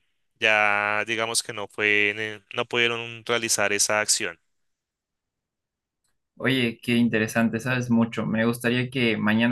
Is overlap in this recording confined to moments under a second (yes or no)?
yes